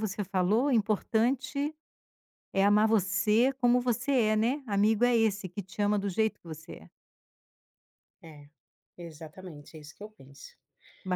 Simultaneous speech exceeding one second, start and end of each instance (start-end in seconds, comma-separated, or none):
none